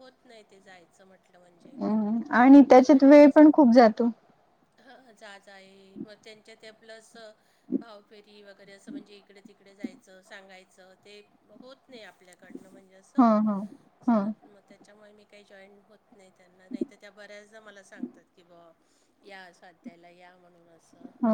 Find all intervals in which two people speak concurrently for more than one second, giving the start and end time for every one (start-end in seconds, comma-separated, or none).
none